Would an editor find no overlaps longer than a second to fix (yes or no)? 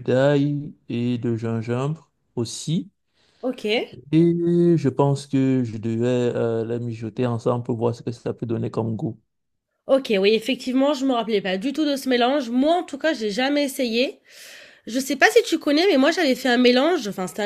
yes